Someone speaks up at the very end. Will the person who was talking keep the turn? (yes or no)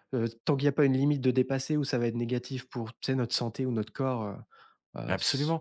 no